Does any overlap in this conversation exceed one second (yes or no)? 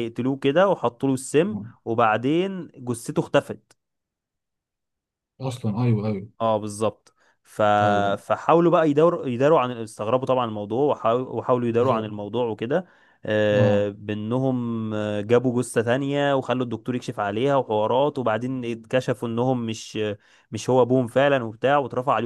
no